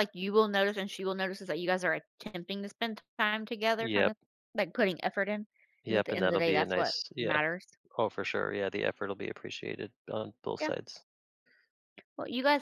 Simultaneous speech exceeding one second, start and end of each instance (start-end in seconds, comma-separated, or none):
5.9-7.4